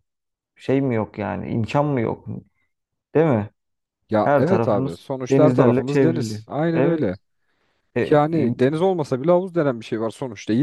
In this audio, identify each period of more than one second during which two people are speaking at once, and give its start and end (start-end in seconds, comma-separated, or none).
4.2-7.2